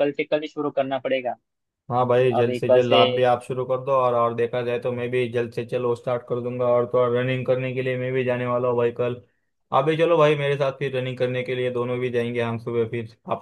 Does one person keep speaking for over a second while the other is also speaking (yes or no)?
no